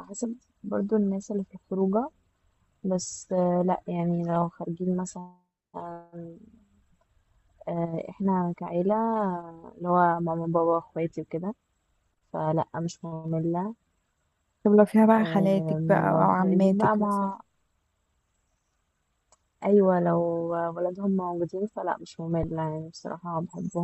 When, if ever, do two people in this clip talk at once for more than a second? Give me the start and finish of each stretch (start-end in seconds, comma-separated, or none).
15.2-17.3